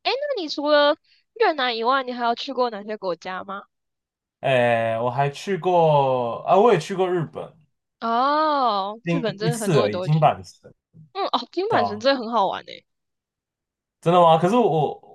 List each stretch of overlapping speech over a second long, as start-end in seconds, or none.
9.0-10.3